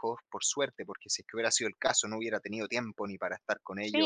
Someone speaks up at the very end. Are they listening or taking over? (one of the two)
taking over